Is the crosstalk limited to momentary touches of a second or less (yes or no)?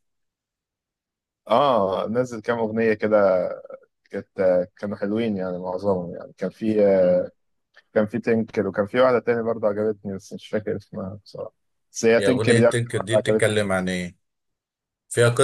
no